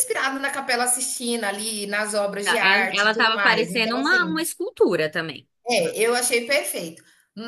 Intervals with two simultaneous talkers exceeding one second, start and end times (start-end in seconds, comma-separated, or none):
2.4-4.3